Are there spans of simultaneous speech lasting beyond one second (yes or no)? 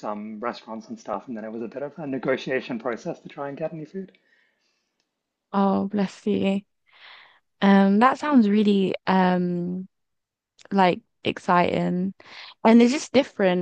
no